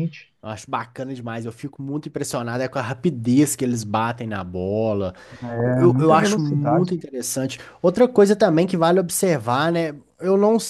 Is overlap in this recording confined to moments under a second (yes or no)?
no